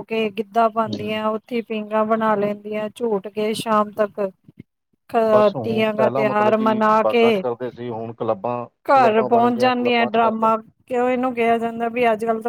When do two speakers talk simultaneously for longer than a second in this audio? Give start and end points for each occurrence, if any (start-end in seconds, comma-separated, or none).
5.6-7.4, 8.9-10.5